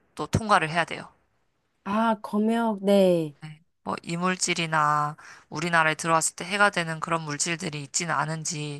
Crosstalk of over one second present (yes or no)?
no